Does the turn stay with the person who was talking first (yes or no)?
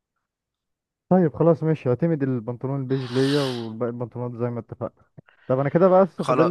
yes